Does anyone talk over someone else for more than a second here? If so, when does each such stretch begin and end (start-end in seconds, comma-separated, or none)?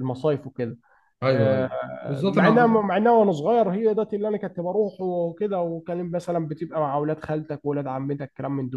1.2-2.8